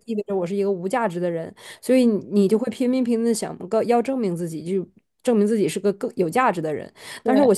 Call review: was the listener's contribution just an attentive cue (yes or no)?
yes